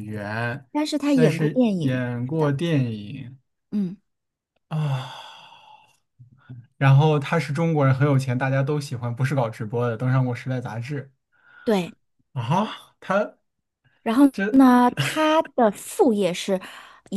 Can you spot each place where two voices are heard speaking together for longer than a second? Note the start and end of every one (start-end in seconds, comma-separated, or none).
1.1-2.5